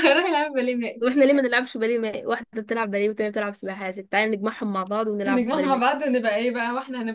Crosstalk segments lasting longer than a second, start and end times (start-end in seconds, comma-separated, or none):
none